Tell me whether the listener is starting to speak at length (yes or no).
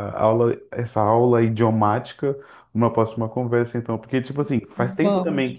no